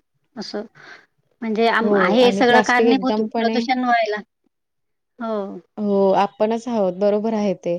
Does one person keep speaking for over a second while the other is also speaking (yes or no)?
yes